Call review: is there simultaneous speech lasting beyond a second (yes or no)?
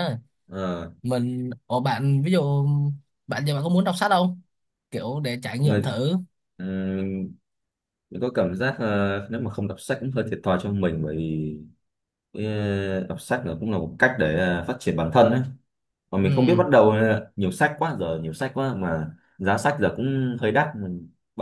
no